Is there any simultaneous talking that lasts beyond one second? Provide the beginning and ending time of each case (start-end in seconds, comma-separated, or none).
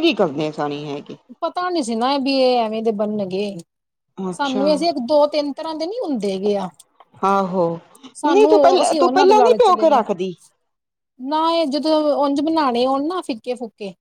8.3-10.0